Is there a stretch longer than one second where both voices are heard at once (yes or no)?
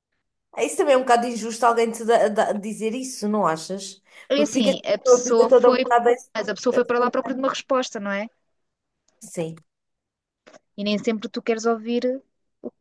yes